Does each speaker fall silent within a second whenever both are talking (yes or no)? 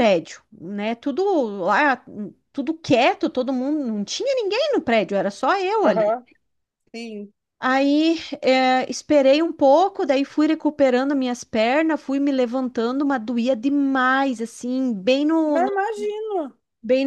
yes